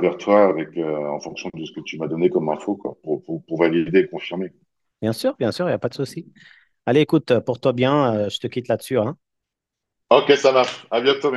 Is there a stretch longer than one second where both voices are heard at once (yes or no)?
no